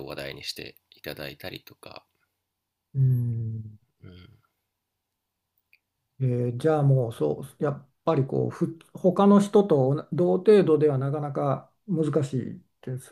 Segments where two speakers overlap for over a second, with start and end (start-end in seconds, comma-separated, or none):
none